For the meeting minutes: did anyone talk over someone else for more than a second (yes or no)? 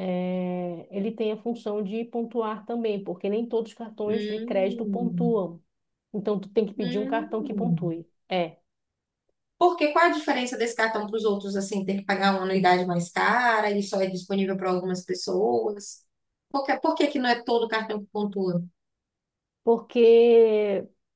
yes